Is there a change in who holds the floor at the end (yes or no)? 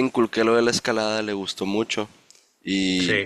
no